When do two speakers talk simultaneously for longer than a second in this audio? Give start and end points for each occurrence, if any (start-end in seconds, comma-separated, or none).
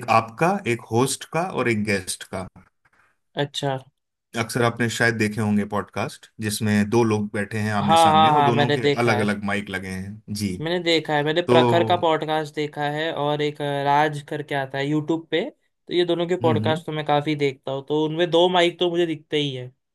7.8-9.3